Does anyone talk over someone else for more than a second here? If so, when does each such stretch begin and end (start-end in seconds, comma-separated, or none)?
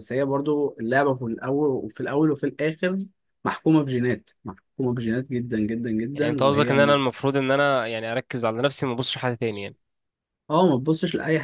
none